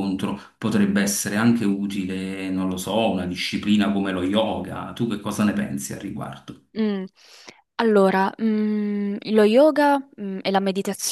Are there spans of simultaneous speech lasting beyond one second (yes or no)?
no